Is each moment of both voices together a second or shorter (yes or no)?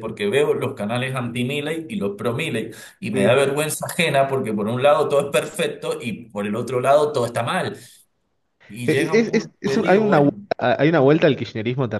no